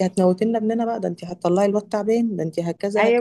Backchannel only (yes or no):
no